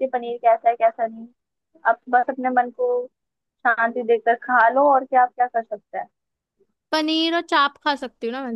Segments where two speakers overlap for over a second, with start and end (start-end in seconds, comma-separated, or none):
none